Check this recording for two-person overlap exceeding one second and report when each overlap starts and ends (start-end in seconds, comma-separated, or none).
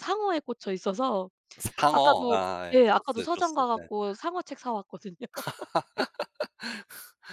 1.9-3.9